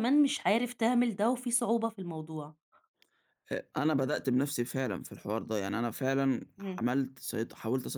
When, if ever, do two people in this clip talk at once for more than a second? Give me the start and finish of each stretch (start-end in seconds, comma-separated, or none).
none